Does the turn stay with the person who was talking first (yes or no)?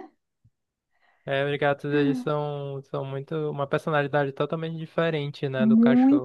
no